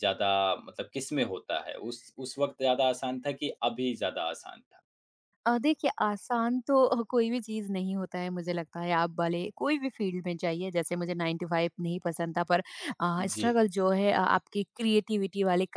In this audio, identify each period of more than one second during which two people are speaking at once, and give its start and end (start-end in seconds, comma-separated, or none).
none